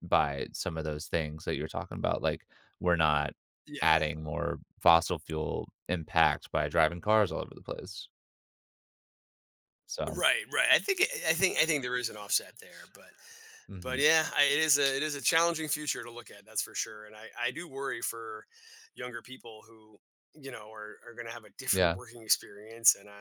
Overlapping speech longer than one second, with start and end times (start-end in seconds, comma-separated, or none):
none